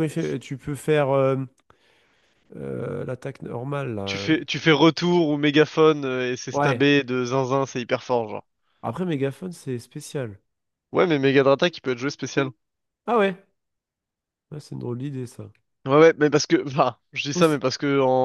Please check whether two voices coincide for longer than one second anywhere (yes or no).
no